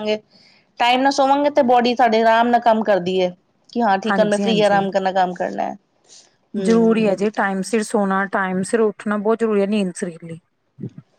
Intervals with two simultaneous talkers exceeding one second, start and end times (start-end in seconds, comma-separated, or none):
none